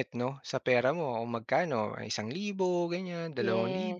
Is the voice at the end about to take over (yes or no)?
yes